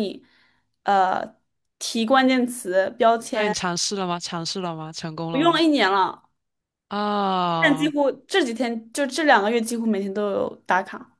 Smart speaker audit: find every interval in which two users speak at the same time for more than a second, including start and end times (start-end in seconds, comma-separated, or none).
none